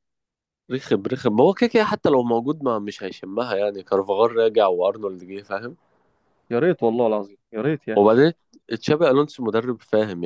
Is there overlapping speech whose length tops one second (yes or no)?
no